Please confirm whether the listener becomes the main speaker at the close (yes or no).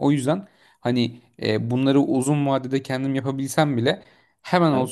no